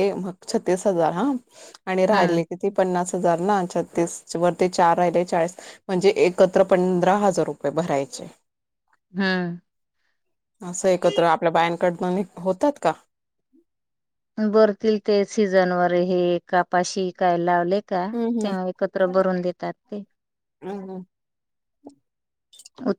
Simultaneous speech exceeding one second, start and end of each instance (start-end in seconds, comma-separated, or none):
none